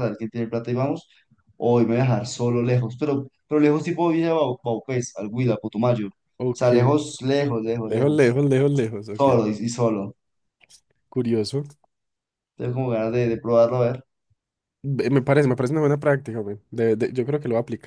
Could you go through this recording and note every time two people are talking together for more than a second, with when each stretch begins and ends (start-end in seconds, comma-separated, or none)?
none